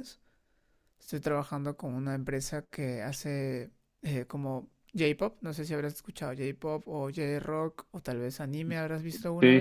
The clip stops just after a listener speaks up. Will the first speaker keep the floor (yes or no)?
no